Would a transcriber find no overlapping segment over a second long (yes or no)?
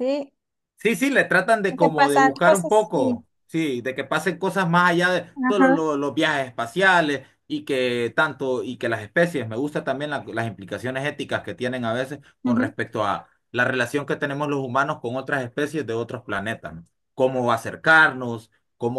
no